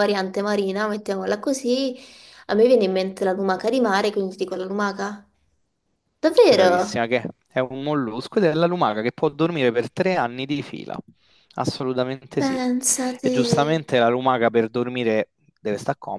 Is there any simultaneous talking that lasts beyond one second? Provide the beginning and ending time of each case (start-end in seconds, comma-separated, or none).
none